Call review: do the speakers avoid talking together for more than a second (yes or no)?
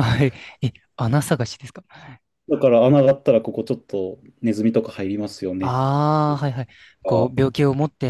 yes